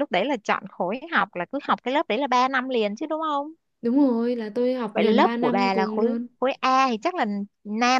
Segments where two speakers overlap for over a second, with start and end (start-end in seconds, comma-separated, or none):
4.9-6.3